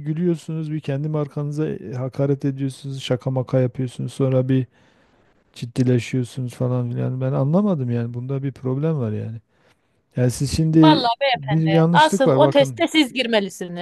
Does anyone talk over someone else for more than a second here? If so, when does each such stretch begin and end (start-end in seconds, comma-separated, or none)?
10.8-12.8